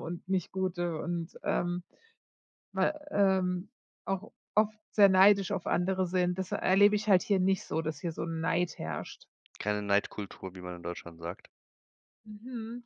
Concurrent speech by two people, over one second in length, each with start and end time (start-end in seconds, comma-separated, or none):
none